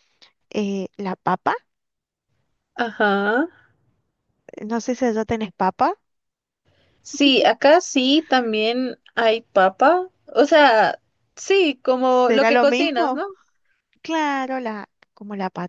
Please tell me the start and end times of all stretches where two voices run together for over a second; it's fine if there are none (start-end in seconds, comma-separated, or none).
12.1-13.2